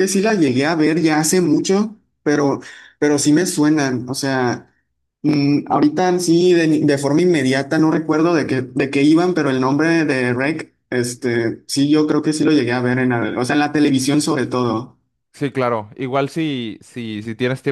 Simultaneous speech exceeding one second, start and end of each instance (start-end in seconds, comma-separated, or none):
none